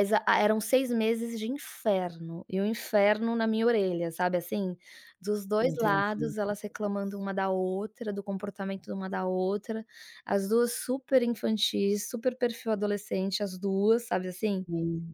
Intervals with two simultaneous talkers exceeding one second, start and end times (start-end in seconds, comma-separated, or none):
5.7-7.2